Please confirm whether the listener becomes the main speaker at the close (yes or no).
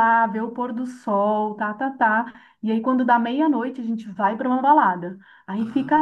no